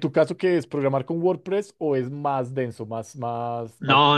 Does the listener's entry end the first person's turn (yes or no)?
yes